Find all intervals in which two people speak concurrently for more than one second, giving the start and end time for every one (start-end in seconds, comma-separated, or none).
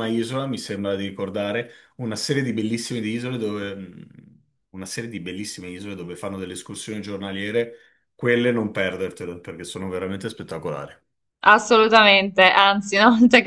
none